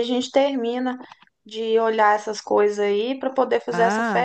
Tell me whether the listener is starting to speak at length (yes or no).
yes